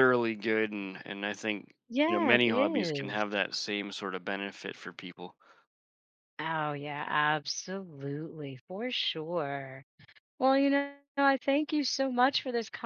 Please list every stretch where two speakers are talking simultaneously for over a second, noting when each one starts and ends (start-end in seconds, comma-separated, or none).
1.9-3.2